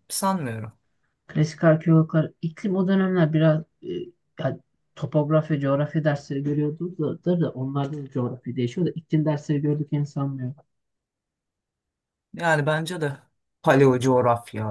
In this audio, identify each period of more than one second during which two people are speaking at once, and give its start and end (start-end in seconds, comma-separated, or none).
none